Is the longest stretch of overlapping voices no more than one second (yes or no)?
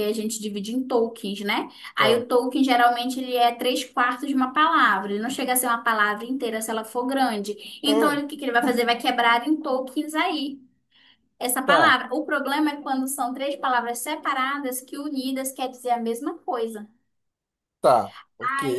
yes